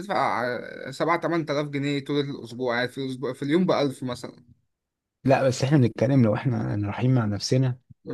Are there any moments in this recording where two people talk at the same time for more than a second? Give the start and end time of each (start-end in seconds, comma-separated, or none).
none